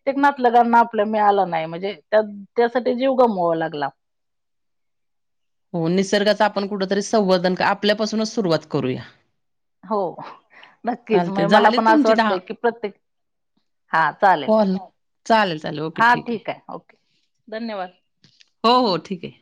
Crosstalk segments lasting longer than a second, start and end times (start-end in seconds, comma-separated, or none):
11.1-12.3